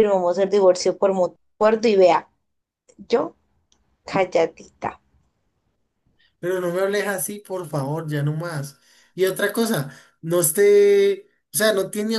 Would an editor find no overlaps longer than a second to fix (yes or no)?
yes